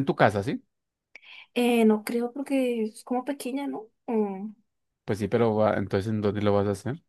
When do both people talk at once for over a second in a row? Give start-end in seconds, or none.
none